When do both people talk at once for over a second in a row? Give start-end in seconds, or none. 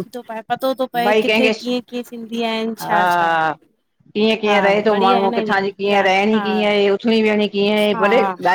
4.5-6.4